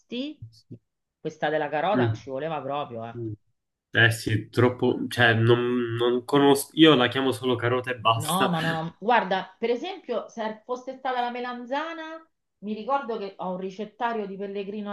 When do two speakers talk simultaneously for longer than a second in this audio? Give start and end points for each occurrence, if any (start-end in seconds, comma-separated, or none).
none